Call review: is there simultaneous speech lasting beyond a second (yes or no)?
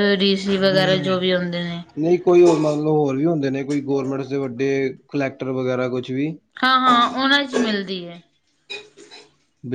no